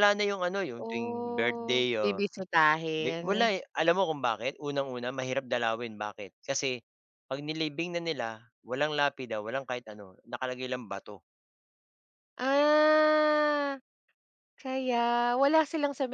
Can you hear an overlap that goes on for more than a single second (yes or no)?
yes